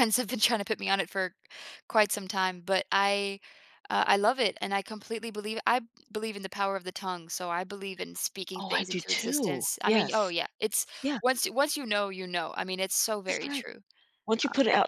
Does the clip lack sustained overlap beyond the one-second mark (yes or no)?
no